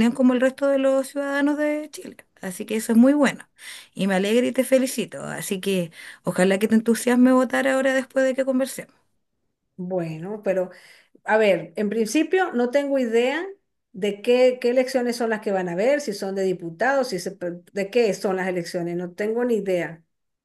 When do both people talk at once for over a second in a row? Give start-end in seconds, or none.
none